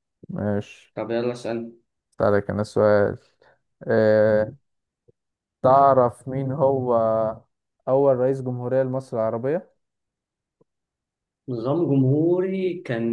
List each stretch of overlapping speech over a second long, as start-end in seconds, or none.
none